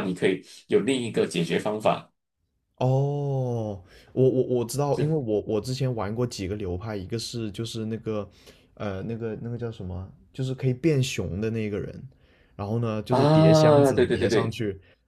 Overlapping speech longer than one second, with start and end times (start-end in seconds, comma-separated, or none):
13.1-14.6